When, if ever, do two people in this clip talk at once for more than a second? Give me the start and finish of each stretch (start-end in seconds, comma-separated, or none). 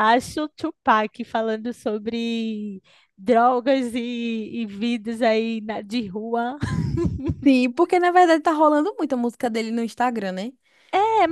none